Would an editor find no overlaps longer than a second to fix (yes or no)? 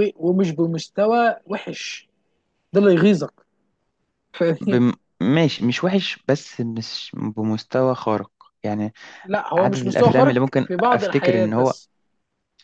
no